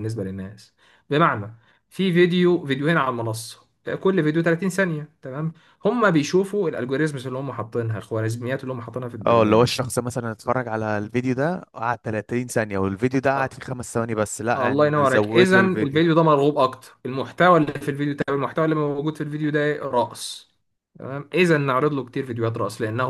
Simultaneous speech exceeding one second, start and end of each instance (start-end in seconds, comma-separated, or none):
14.6-16.0